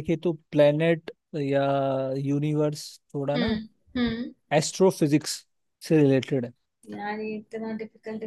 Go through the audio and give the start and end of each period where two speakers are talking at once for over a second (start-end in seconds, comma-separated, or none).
none